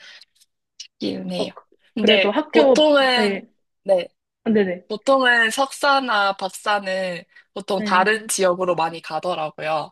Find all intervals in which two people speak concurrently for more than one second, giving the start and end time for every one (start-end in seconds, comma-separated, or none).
2.0-3.4